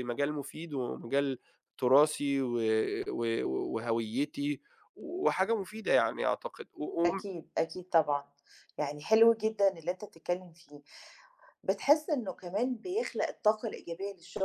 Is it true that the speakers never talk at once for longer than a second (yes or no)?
yes